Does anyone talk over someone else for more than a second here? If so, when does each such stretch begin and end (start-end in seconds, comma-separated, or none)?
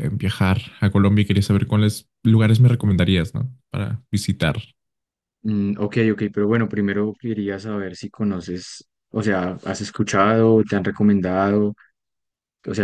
none